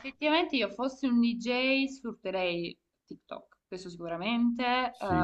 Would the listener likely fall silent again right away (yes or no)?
yes